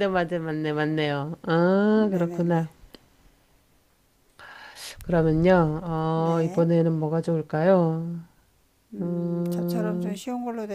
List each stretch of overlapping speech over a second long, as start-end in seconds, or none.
9.0-10.2